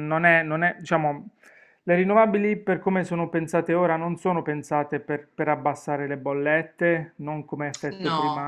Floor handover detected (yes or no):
no